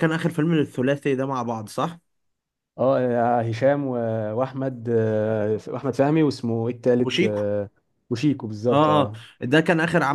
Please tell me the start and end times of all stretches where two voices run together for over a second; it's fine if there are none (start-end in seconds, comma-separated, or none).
none